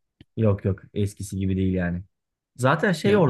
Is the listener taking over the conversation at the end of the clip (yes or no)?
no